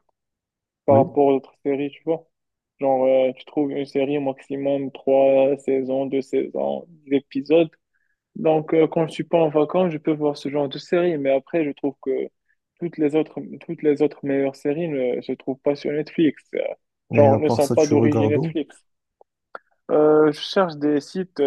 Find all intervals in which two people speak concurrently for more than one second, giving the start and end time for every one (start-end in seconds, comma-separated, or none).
17.2-18.6